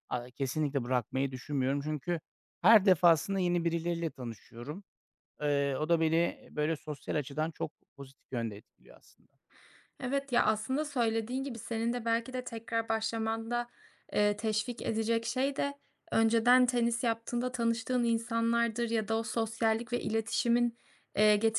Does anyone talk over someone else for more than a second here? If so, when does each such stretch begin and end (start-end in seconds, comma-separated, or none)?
none